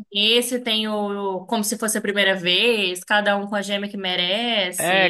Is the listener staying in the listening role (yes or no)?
no